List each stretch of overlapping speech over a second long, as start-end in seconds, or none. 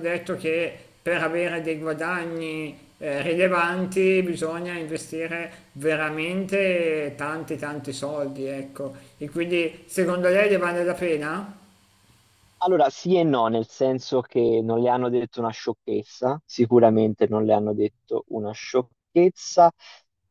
none